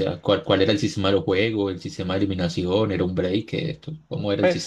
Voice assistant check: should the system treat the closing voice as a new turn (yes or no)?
yes